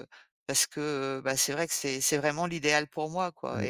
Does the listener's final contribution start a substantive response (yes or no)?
no